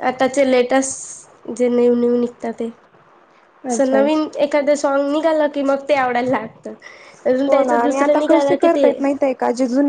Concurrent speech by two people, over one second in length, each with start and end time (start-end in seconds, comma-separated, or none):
7.5-8.9